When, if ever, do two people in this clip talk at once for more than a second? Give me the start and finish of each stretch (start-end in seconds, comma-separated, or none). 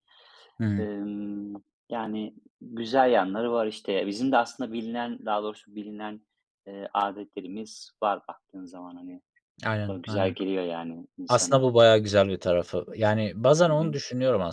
none